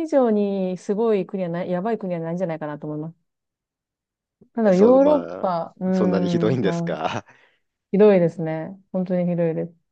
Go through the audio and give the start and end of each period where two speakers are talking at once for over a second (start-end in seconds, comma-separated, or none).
4.6-6.9